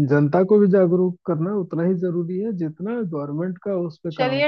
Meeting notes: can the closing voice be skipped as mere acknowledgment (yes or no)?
no